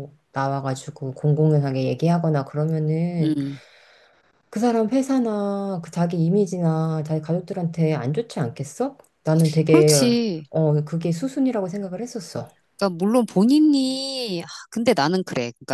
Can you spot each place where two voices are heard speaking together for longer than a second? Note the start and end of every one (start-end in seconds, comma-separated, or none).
none